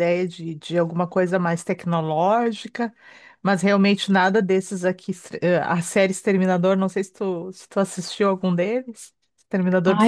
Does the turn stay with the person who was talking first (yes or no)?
no